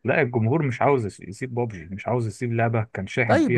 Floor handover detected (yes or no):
yes